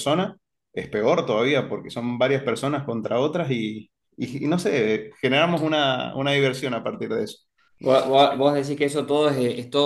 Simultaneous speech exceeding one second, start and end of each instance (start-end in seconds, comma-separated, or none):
none